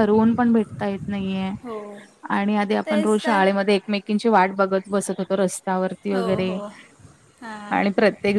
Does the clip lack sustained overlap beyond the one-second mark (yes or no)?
yes